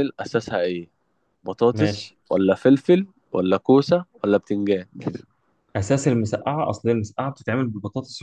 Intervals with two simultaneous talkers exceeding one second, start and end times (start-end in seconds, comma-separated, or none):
none